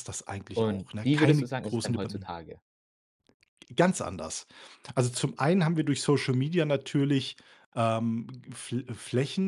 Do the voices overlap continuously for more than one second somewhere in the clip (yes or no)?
yes